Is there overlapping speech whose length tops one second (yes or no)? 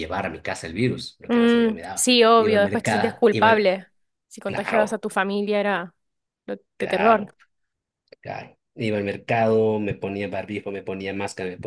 yes